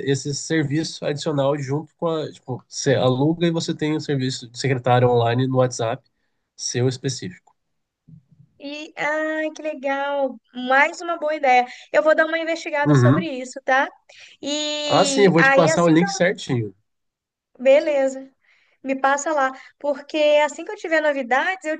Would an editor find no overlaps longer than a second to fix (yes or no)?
no